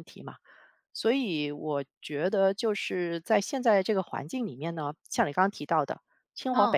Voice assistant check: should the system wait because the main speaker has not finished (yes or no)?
yes